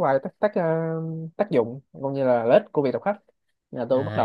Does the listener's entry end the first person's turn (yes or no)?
yes